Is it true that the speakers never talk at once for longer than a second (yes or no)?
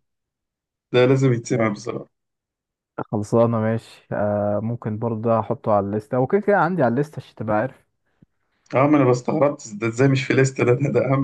yes